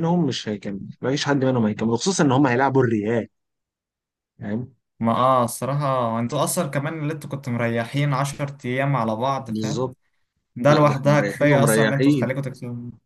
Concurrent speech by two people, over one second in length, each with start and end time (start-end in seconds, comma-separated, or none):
10.7-12.3